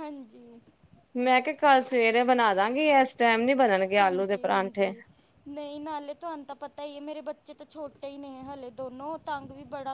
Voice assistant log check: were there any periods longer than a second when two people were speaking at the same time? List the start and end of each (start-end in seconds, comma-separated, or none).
none